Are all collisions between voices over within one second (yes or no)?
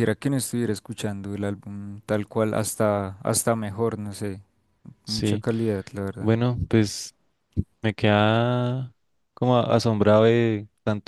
yes